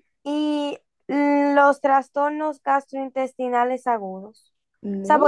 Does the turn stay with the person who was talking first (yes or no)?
yes